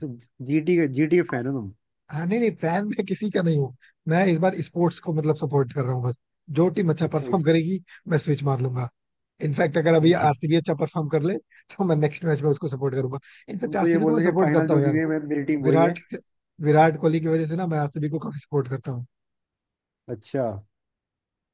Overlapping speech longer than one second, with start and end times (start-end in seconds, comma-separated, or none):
13.6-15.0